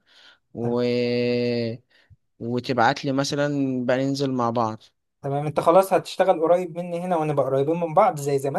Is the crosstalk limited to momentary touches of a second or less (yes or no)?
yes